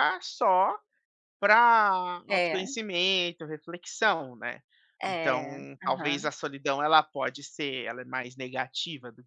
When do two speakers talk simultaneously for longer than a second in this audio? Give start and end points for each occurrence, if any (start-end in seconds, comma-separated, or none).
5.1-6.3